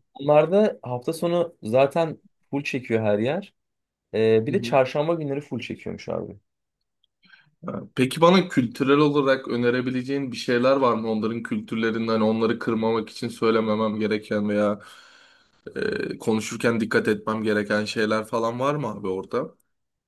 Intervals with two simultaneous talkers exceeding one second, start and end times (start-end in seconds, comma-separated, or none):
none